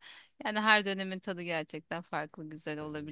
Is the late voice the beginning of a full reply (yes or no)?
no